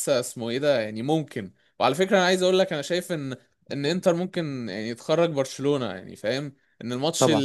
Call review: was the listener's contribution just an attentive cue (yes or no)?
yes